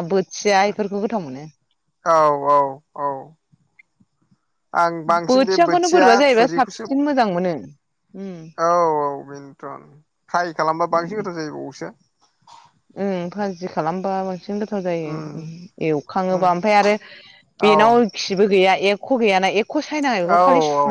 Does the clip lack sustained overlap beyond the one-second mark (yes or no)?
no